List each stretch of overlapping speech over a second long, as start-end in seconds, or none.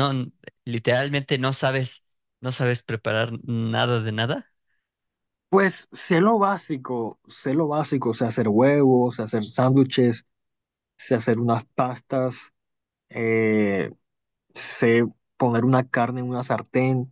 none